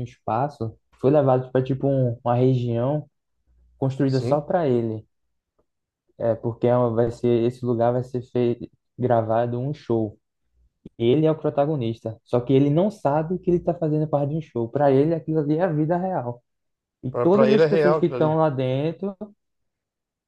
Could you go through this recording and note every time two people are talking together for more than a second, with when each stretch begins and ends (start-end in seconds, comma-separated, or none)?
17.1-18.4